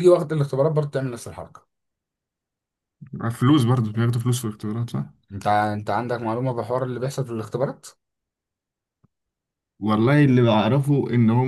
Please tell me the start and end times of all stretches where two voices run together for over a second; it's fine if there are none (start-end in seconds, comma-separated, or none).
none